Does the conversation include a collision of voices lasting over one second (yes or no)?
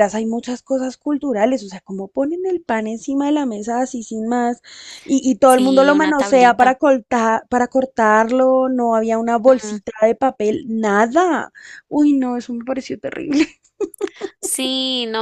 yes